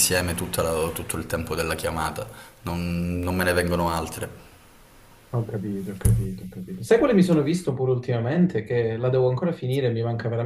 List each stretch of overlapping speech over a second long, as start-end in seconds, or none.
none